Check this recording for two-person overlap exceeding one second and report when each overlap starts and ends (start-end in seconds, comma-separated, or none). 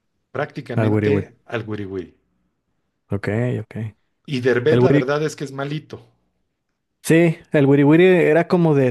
none